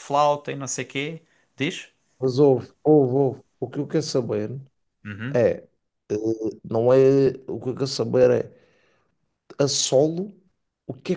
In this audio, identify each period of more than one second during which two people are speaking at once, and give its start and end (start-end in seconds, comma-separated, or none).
none